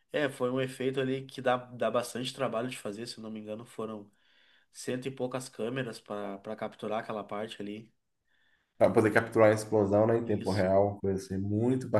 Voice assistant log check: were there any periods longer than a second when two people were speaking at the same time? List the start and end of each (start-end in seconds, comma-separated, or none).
none